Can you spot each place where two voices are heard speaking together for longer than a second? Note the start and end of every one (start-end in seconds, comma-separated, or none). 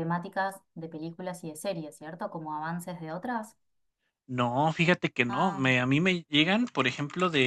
none